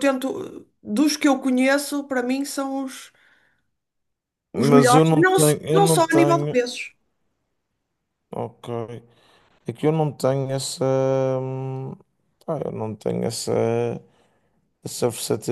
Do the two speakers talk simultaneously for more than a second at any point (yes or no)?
yes